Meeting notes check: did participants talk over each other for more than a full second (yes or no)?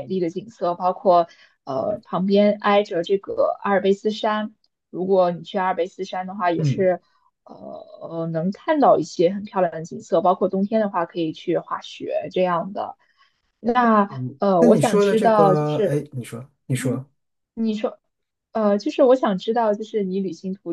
yes